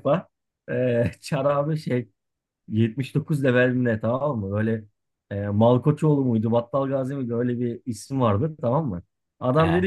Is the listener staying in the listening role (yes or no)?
yes